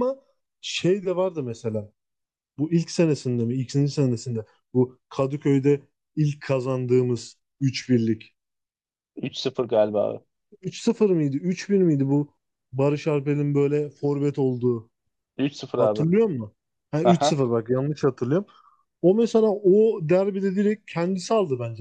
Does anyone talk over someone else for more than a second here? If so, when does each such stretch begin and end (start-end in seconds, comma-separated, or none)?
none